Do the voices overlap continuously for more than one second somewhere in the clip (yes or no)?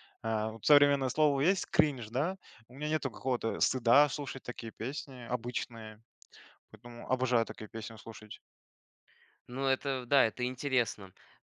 no